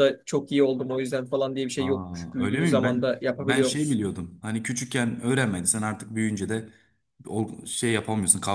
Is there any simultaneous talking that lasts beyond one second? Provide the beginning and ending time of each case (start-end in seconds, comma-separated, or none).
1.8-4.0